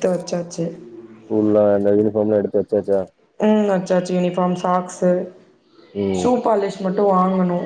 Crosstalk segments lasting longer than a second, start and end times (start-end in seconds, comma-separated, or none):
none